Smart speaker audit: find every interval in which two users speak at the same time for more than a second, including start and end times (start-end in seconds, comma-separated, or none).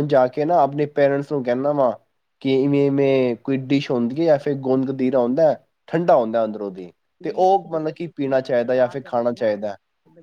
7.2-9.5